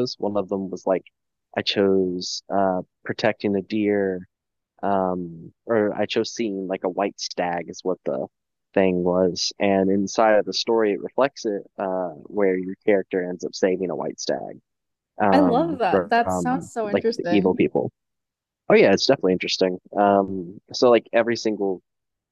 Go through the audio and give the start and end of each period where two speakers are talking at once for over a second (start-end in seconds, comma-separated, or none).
15.3-17.5